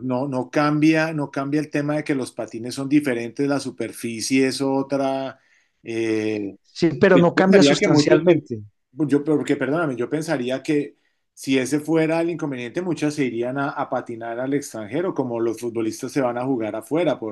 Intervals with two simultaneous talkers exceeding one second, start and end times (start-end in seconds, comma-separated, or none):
7.1-8.4